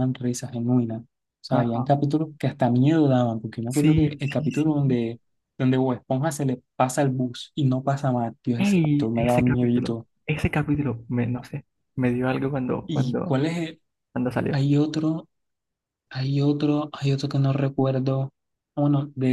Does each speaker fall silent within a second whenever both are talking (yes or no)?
no